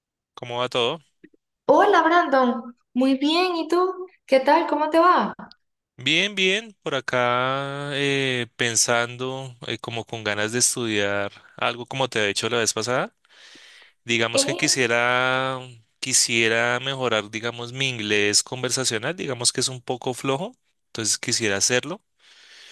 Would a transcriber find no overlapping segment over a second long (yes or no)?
yes